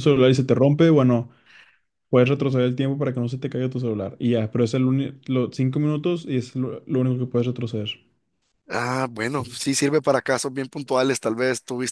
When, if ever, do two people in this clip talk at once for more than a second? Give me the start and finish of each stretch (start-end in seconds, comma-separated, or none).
none